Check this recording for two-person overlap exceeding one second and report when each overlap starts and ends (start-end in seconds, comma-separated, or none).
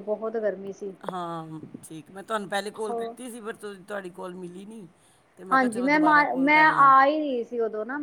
5.5-6.9